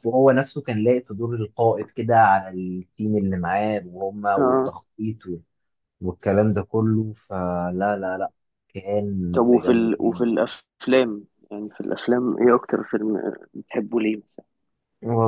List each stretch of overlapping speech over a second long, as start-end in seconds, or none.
none